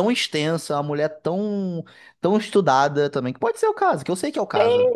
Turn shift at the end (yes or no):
yes